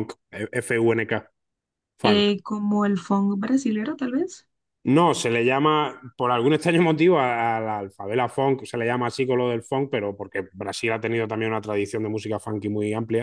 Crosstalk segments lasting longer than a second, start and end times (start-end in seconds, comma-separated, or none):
none